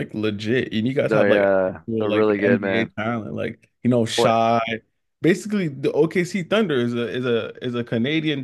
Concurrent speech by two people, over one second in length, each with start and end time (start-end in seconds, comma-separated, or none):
1.0-2.9